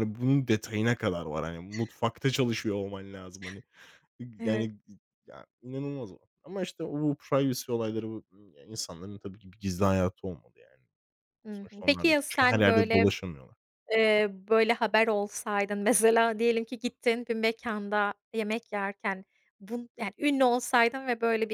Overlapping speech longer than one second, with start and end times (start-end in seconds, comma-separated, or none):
11.5-13.1